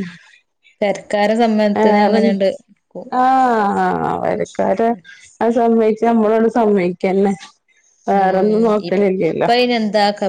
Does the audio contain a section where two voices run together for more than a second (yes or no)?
yes